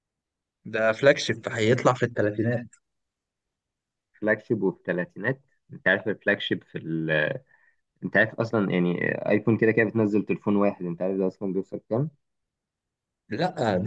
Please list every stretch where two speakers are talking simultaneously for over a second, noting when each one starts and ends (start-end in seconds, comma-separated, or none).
none